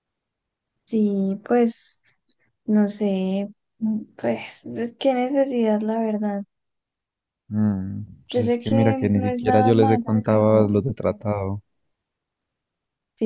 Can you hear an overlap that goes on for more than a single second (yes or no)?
yes